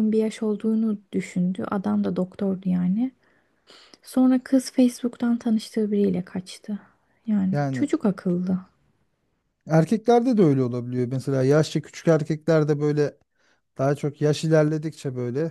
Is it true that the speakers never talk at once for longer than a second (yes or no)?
yes